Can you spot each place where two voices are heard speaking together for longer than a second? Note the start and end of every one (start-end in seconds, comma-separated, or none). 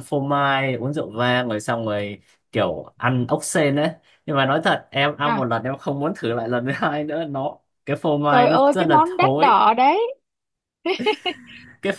8.3-9.6